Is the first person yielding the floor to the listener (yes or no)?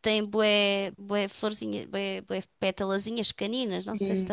no